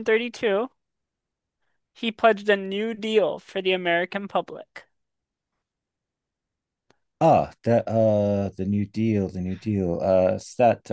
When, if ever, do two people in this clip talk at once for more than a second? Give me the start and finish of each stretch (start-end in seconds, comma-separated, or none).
none